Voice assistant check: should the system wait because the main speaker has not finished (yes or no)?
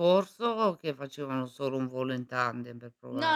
no